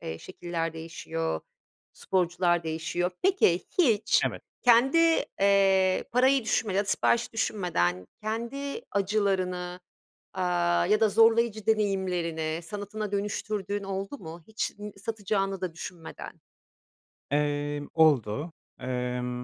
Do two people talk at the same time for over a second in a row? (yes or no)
no